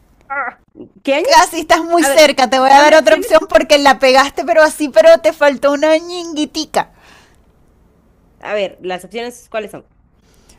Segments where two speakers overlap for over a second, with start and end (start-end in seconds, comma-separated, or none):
2.0-3.3